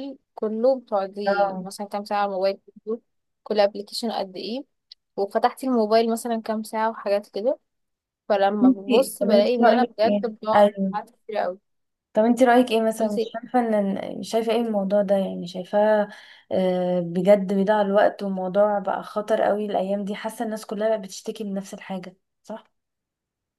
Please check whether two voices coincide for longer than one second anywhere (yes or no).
yes